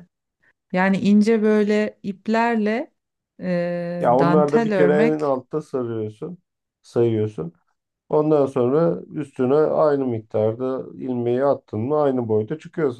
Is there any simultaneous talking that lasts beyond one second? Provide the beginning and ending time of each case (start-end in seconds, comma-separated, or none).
4.0-5.3